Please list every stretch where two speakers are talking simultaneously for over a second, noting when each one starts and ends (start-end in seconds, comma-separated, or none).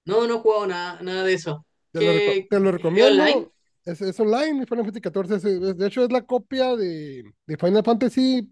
1.9-3.5